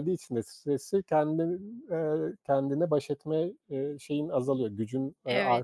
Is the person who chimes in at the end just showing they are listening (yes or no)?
no